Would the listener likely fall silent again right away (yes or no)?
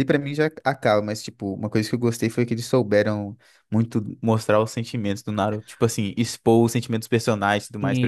no